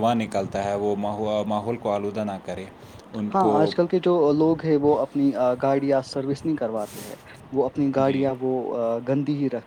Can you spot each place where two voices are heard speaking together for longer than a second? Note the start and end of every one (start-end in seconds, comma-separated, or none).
none